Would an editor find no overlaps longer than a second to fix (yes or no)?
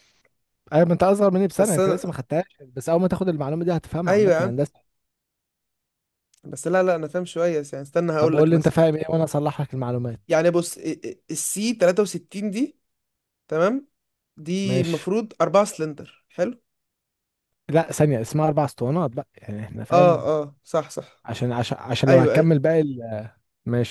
yes